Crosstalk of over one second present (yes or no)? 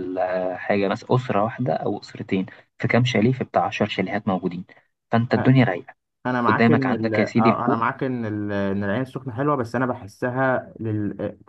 yes